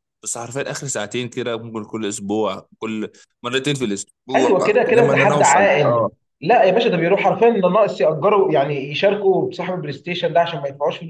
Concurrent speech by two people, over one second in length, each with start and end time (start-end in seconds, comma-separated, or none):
4.3-6.1